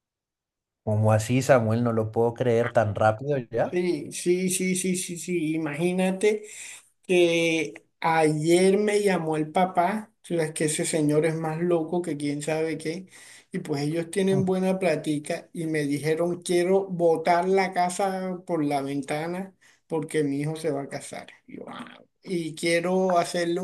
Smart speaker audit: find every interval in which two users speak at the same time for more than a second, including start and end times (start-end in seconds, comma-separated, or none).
none